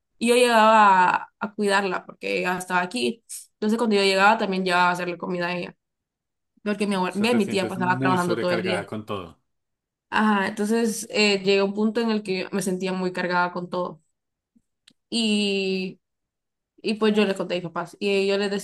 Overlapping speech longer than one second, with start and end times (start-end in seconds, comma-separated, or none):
7.1-8.9